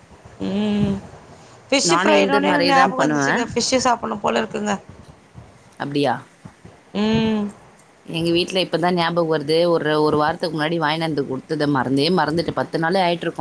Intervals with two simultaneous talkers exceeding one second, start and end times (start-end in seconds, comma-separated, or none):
1.9-3.4